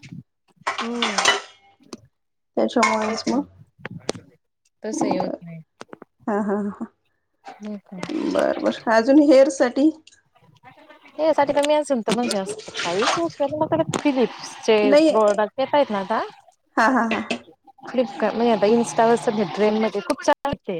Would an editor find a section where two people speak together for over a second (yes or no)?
no